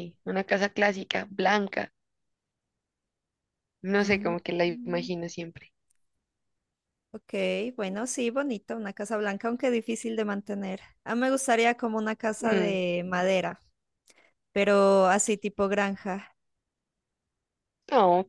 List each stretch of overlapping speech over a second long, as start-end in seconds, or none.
none